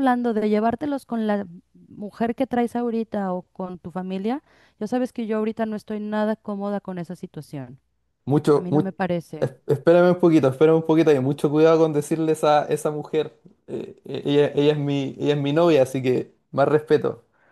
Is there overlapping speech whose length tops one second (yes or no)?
no